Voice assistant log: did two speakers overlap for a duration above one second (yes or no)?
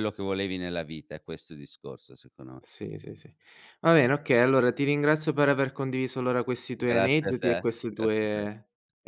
yes